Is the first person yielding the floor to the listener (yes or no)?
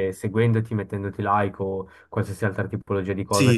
yes